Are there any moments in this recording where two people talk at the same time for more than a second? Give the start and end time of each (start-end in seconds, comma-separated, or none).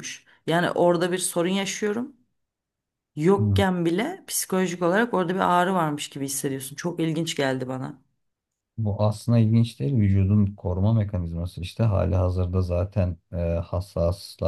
none